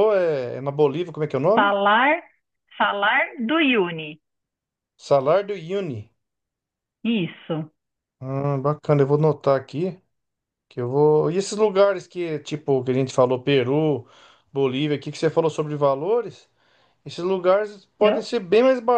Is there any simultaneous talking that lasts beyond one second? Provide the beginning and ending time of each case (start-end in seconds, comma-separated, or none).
none